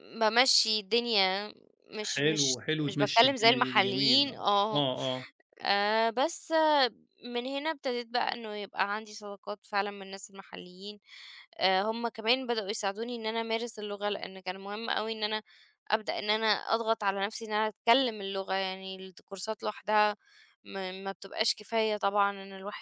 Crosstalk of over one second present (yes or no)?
yes